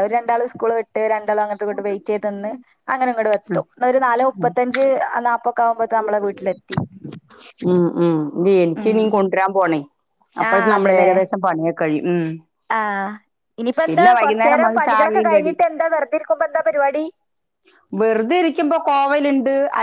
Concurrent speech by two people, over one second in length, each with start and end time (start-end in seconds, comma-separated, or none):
13.9-15.5